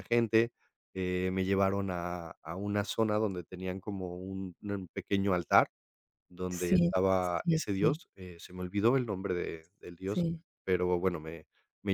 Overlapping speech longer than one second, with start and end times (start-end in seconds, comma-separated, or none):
6.5-8.0